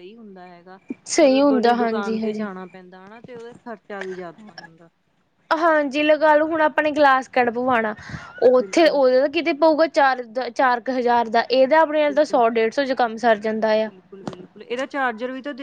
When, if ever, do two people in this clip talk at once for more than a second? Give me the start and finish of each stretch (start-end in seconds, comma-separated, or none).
1.2-2.5